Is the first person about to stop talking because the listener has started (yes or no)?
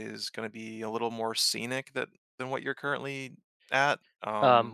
yes